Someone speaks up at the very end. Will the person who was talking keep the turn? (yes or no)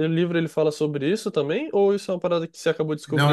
no